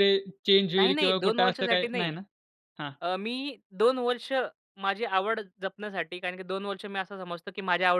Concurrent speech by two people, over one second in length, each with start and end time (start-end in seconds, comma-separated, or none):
0.7-2.2